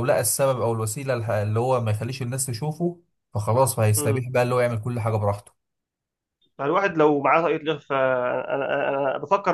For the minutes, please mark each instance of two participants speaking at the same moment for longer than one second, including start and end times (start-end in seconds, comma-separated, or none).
none